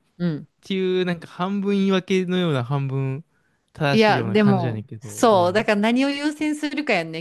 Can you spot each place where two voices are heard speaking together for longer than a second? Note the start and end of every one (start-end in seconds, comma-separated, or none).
3.9-5.7